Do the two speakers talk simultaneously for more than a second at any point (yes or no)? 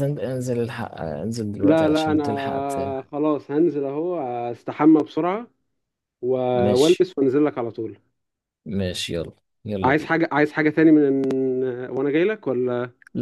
yes